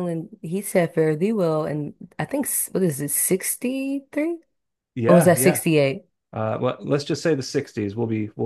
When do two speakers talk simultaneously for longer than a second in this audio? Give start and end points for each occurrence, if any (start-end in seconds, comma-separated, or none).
none